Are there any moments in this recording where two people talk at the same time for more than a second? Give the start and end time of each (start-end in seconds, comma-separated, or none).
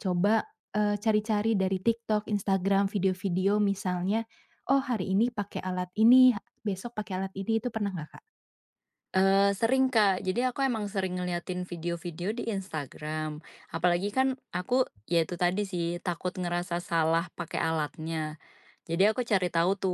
none